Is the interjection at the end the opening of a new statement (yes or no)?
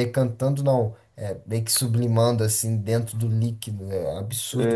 yes